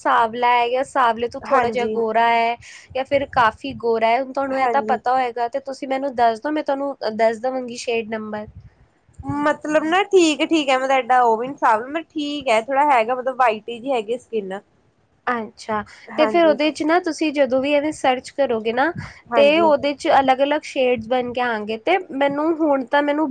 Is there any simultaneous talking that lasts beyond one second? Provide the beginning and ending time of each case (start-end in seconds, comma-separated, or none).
none